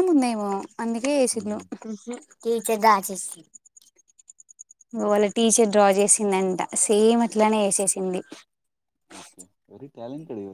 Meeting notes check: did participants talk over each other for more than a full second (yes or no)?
no